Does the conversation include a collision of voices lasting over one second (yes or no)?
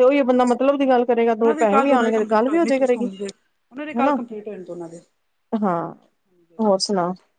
yes